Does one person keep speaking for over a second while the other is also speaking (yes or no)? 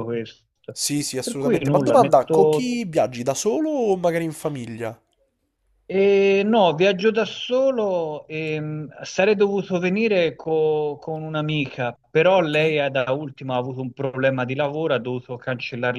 yes